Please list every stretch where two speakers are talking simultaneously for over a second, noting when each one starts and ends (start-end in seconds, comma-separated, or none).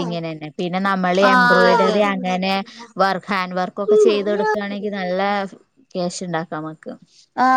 1.3-2.5